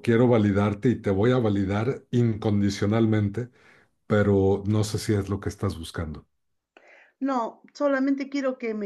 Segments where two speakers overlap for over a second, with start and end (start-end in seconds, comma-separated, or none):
none